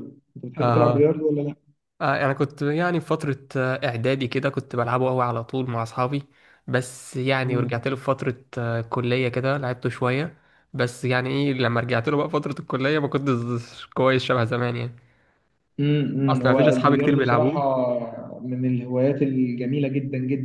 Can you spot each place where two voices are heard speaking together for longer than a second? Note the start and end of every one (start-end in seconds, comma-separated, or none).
16.3-17.6